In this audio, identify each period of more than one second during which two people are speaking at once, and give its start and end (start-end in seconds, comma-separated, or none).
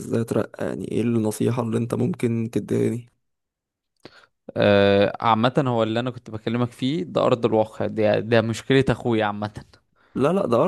none